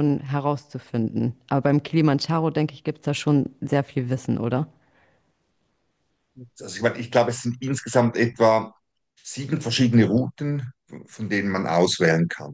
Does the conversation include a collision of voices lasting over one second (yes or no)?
no